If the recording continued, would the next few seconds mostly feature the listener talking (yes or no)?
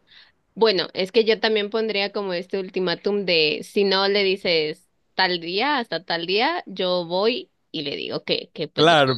yes